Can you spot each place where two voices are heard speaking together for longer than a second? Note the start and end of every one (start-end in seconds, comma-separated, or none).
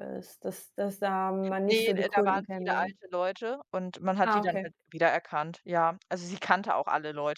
1.6-3.0